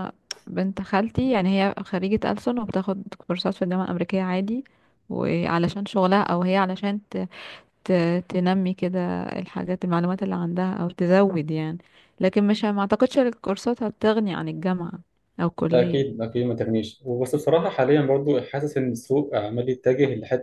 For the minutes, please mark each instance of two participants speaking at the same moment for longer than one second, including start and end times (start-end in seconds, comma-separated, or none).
none